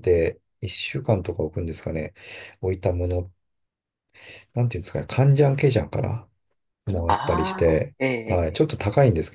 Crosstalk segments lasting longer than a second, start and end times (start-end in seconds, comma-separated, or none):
7.1-8.7